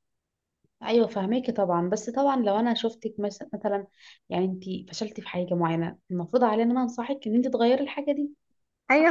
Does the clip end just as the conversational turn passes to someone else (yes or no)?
yes